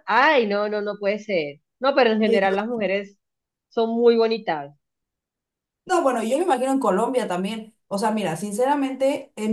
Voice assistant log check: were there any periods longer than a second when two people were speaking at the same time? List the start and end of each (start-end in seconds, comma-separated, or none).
none